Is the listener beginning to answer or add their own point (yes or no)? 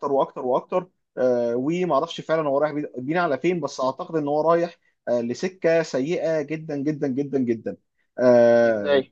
no